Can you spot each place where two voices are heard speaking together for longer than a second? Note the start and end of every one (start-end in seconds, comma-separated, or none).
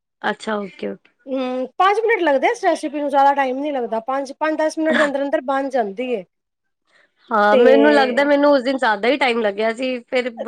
none